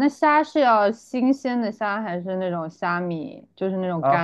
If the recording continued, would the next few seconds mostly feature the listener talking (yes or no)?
yes